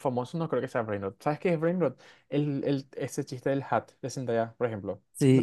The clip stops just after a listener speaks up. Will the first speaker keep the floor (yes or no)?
no